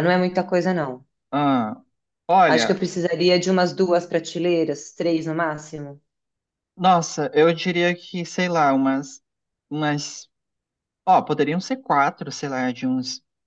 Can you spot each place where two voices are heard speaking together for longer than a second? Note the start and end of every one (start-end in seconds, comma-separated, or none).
none